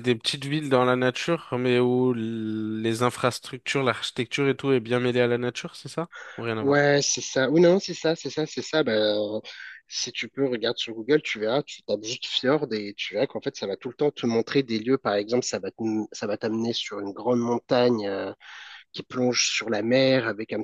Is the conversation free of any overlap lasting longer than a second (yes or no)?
yes